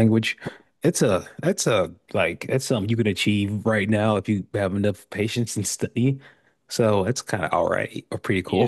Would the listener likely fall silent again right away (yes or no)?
no